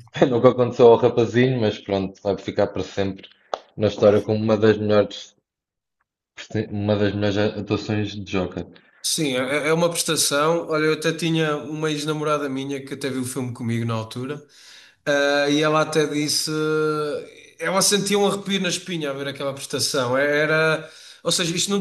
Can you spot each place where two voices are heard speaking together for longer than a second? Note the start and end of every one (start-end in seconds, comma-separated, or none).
none